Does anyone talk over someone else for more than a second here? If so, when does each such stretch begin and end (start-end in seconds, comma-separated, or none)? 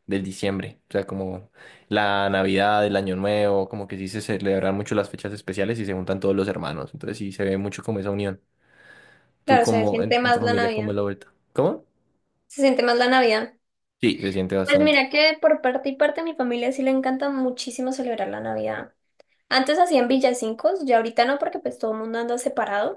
9.5-11.0